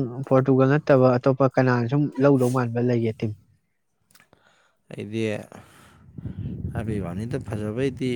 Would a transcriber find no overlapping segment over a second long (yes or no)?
yes